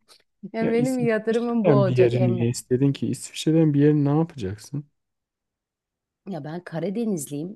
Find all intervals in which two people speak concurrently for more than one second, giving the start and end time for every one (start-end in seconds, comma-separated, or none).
0.6-2.5